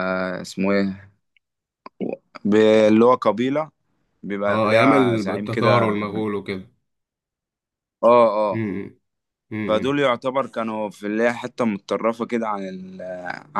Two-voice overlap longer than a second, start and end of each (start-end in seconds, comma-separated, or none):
4.5-5.9